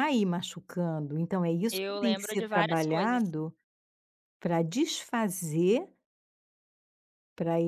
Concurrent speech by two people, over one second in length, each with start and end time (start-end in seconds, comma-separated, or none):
1.7-3.2